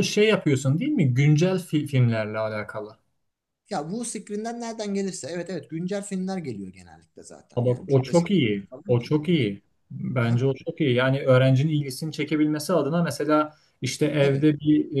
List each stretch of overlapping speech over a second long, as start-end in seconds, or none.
7.5-9.4